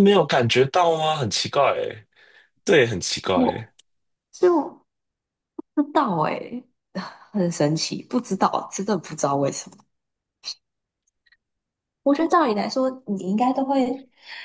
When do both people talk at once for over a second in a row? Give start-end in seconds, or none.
none